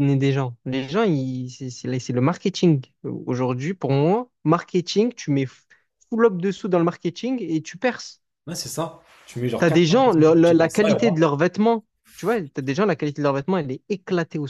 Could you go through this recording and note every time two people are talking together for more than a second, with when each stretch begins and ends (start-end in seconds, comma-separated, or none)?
9.6-11.2